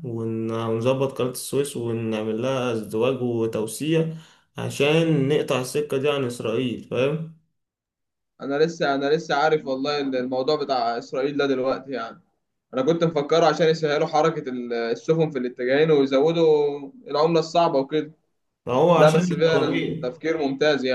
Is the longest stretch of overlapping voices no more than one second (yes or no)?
no